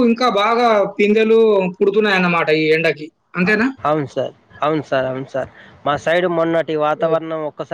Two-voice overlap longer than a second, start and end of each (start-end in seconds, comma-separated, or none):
none